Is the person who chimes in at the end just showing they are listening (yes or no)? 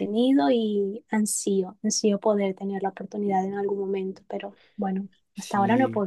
no